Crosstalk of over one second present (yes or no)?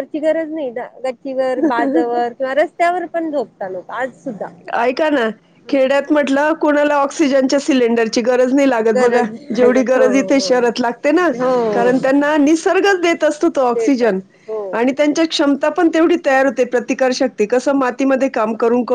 yes